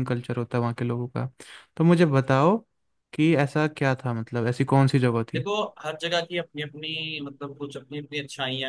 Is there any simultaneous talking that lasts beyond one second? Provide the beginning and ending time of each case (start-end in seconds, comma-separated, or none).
none